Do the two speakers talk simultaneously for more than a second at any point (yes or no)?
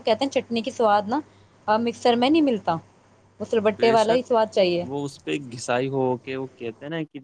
no